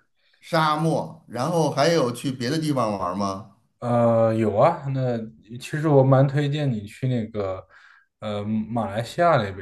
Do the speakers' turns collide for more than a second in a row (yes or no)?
no